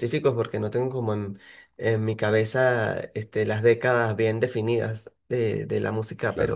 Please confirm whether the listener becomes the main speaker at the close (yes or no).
no